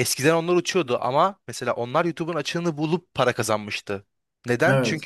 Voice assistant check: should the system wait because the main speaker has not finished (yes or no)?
yes